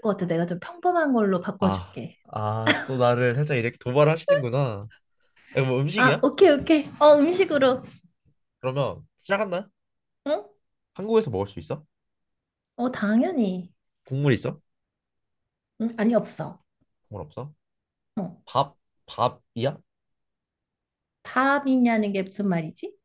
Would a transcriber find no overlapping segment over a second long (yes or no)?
yes